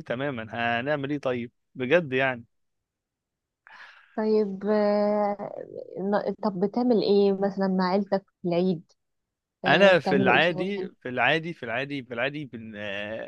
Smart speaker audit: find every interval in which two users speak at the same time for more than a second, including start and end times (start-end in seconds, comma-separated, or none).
9.7-10.9